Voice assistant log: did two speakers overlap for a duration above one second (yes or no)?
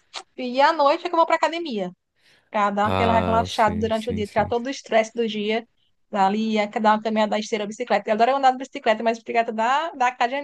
yes